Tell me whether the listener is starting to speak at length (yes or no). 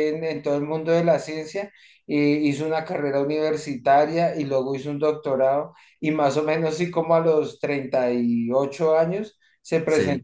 no